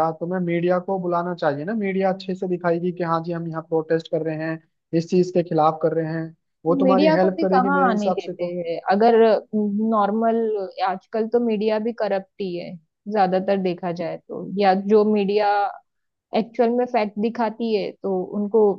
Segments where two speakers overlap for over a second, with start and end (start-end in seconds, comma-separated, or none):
6.8-8.6